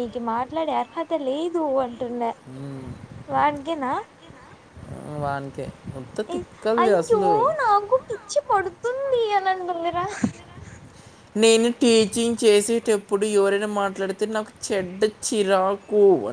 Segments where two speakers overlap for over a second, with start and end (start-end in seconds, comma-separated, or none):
none